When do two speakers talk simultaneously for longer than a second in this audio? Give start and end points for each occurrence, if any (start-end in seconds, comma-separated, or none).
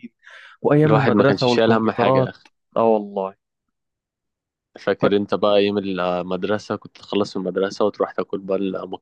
0.8-2.3